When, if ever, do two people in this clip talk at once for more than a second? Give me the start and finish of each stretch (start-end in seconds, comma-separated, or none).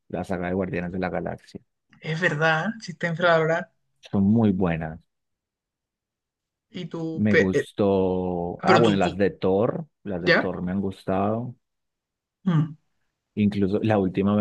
none